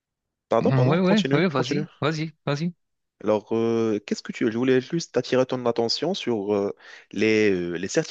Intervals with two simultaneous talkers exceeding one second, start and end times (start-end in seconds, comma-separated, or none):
0.6-1.9